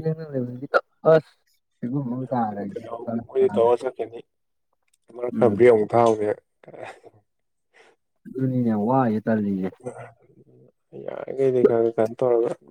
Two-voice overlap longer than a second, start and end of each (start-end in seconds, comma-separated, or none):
2.1-3.7